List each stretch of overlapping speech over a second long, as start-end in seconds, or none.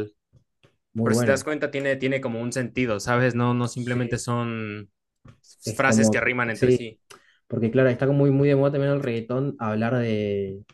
5.6-6.9